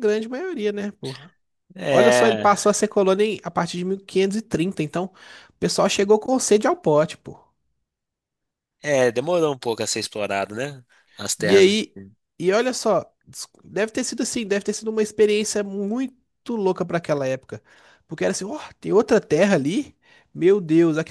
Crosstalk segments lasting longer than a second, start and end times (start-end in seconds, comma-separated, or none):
none